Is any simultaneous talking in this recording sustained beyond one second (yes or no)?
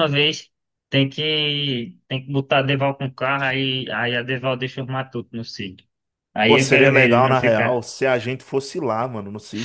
yes